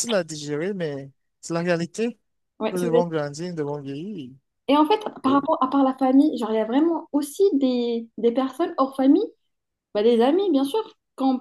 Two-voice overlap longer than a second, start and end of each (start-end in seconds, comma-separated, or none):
none